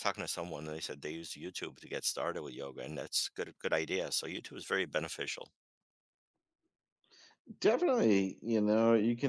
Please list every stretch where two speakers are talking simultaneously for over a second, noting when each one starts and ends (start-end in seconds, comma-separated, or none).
none